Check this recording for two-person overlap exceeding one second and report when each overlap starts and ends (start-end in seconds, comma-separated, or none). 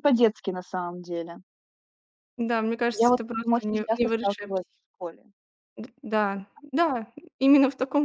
3.0-4.8